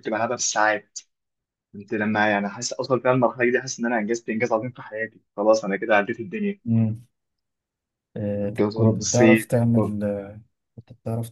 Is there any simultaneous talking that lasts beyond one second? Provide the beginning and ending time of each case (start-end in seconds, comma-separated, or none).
8.6-10.0